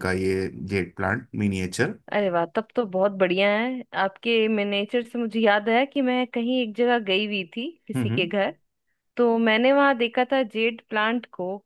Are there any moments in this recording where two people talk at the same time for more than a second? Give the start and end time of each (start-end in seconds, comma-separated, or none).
none